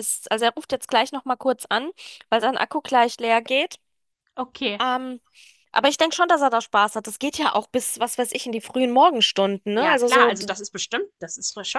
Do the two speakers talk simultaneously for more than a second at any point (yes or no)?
no